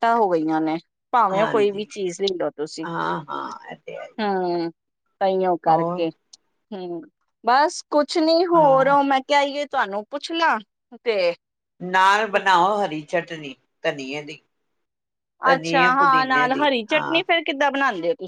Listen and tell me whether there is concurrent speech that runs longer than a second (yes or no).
yes